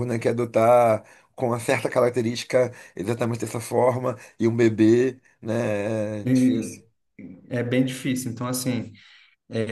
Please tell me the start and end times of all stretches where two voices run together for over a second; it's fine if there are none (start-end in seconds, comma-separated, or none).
none